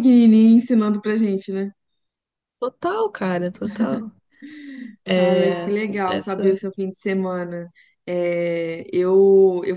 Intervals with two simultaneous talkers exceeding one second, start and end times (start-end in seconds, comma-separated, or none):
5.1-6.6